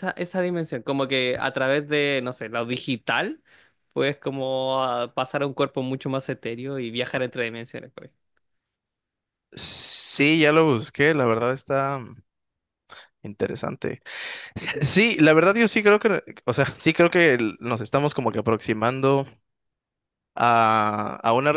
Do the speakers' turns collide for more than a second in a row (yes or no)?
no